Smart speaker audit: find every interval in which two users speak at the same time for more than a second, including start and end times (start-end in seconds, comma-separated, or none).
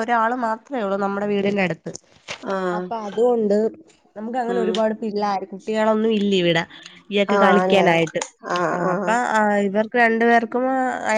none